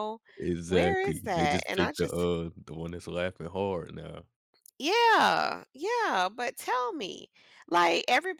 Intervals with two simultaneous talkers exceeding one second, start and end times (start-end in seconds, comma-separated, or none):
0.6-2.3